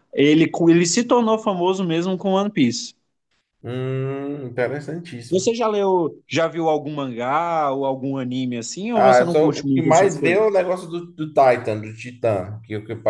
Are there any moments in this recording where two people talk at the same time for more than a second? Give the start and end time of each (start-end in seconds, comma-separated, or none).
8.9-10.4